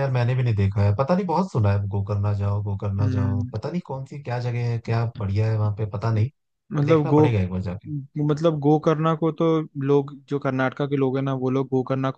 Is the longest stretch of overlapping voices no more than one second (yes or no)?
yes